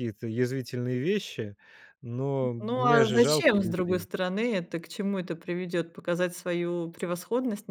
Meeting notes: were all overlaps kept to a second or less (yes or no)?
no